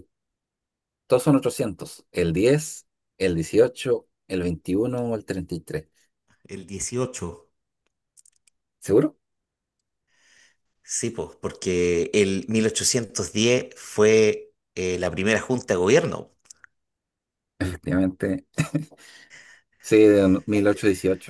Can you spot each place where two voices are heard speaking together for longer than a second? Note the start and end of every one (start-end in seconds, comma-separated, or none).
none